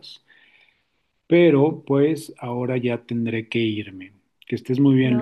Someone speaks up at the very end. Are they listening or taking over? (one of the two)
taking over